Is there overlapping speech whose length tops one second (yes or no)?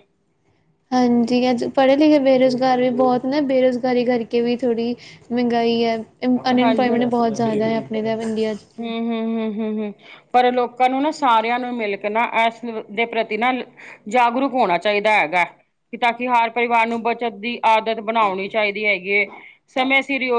no